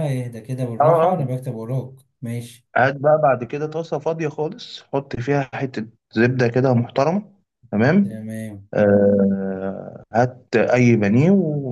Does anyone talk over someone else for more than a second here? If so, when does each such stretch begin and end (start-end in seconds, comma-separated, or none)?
none